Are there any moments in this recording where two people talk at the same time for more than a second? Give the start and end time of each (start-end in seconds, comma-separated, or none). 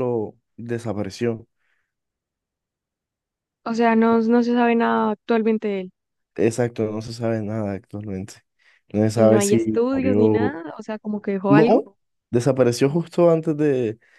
9.2-10.6